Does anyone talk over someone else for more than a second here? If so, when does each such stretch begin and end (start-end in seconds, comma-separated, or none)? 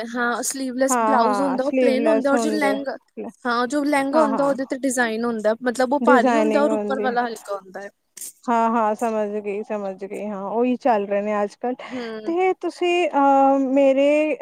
0.9-2.8